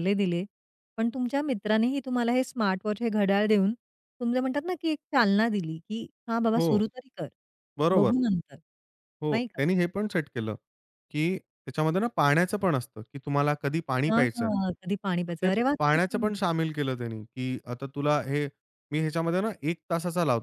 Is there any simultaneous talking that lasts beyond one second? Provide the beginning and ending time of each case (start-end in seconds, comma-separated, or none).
14.1-16.3